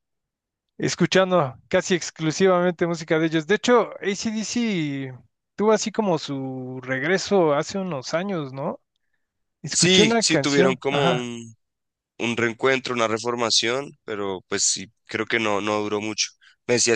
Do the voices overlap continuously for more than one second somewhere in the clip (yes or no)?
yes